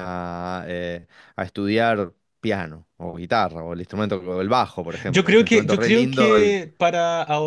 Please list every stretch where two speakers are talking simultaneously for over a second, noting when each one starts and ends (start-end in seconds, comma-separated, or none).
5.1-6.3